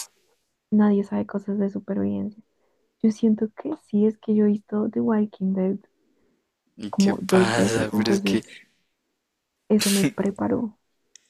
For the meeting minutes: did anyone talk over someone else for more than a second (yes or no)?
yes